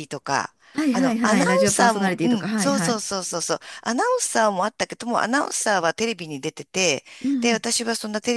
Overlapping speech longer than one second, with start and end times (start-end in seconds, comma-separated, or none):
0.9-3.0